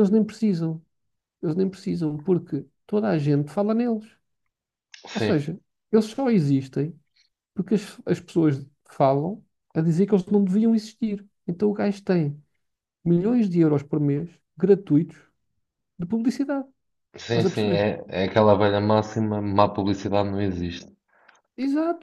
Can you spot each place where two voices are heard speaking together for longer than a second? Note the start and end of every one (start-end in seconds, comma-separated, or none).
none